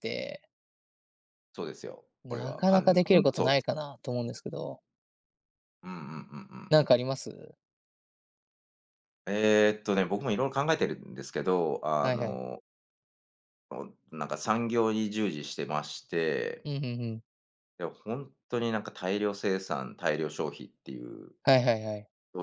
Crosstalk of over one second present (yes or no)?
yes